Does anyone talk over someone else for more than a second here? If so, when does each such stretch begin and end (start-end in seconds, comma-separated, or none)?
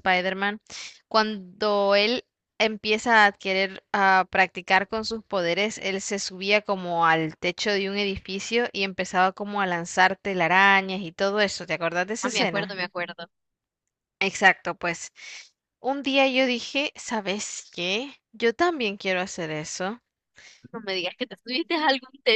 none